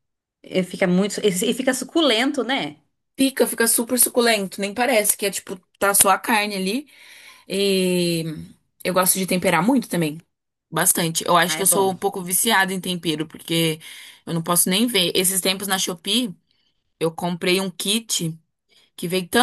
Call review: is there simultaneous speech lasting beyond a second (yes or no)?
no